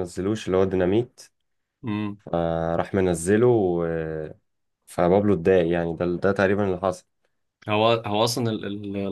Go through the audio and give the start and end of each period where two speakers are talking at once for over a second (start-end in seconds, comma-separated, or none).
none